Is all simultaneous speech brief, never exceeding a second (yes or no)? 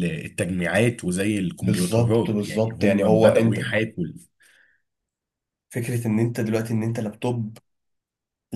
no